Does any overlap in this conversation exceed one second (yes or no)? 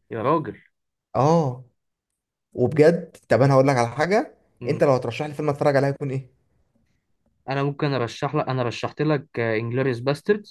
no